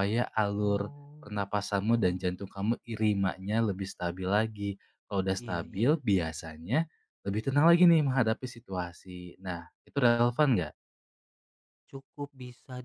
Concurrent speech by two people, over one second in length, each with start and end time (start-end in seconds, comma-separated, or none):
0.6-2.3